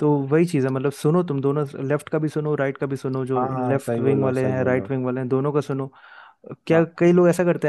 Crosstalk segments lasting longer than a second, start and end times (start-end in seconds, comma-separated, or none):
3.4-4.9